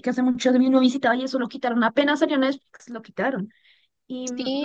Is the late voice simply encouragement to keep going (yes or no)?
no